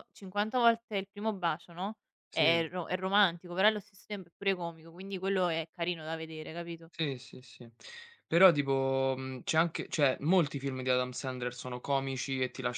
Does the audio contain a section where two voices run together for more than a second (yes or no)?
no